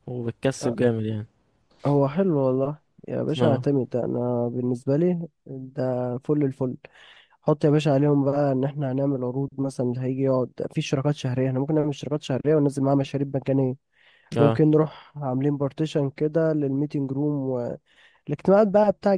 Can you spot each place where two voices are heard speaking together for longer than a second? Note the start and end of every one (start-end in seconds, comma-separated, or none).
none